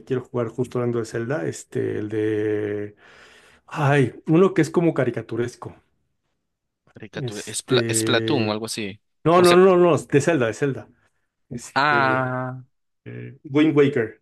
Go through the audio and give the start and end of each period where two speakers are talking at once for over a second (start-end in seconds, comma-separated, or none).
7.2-8.6